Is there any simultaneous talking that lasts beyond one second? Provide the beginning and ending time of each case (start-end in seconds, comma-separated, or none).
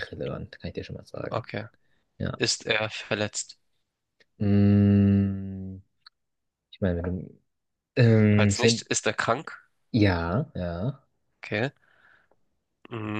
none